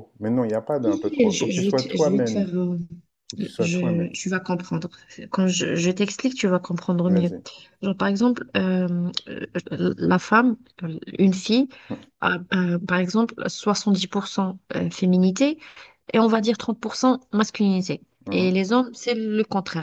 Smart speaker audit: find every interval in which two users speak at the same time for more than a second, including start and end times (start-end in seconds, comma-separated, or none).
0.8-2.5